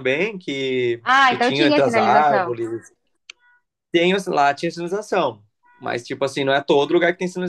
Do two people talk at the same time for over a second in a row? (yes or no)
yes